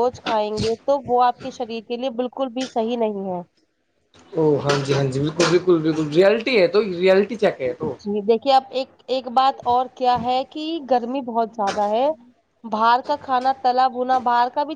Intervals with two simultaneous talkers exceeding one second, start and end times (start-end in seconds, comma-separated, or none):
none